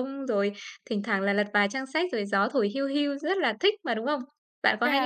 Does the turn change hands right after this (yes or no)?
yes